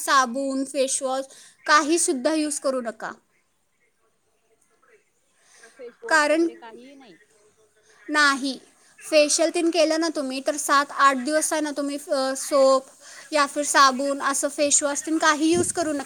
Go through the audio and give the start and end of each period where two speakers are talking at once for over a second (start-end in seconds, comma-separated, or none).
none